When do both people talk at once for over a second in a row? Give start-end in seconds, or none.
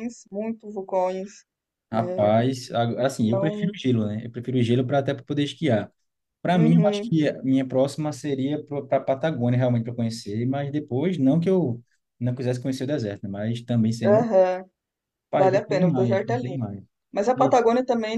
15.4-16.7